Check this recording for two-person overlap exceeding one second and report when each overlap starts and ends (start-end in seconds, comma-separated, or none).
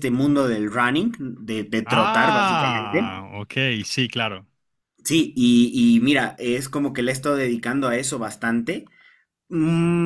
1.9-3.2